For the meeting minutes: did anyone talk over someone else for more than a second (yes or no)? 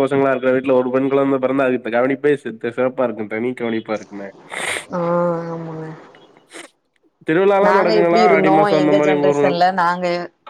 yes